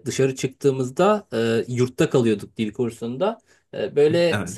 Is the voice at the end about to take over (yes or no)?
no